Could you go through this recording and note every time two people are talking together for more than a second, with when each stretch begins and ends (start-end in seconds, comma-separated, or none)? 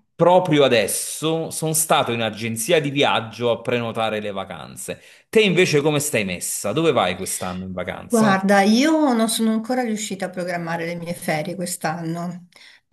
none